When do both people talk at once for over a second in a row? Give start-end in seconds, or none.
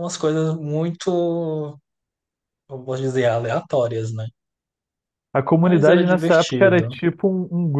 5.5-7.0